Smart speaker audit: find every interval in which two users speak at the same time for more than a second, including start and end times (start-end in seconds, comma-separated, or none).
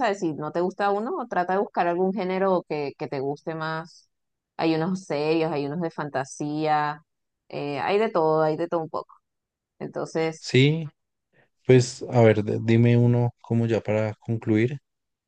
none